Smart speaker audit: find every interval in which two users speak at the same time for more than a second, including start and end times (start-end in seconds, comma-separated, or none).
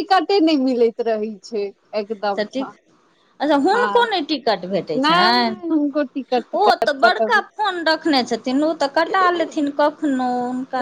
5.0-7.4